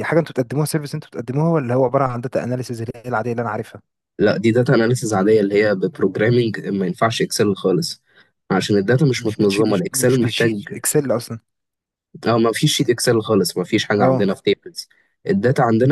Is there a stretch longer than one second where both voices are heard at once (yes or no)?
yes